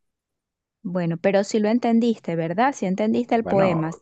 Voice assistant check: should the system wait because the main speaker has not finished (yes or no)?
no